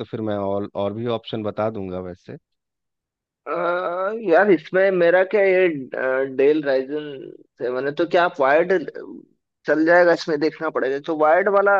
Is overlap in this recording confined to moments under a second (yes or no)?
yes